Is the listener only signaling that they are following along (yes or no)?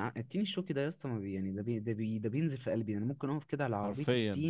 yes